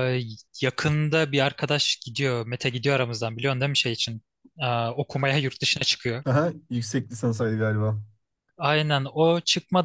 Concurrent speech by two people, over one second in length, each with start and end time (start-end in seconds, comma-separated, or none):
none